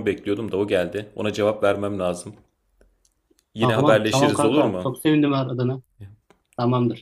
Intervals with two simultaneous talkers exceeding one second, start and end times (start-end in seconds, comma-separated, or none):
3.6-4.9